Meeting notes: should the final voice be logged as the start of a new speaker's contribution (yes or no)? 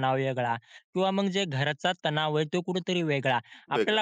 no